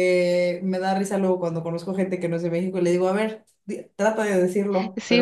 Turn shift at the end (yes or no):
yes